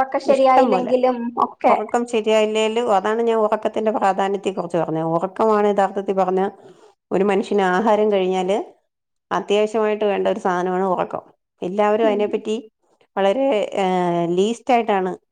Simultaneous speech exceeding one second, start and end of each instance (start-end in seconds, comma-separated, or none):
none